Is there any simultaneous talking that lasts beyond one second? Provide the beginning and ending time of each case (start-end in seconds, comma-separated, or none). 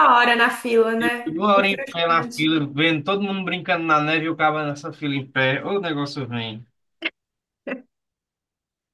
1.0-2.5